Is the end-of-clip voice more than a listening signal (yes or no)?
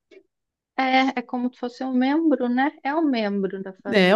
yes